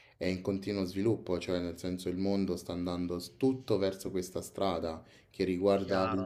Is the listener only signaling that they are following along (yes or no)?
yes